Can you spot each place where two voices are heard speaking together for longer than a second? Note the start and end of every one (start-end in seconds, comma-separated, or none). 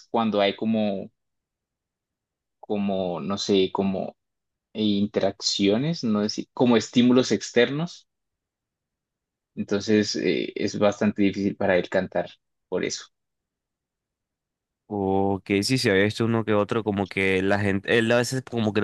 none